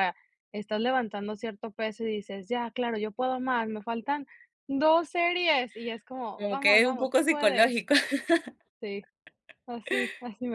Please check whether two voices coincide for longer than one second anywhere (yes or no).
yes